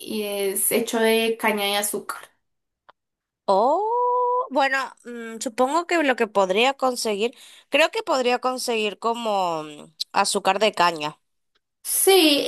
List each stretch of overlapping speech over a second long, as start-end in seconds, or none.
none